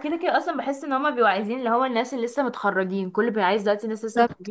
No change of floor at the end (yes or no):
no